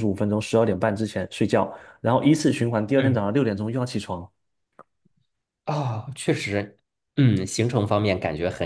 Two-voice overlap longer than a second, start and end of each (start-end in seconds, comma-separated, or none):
none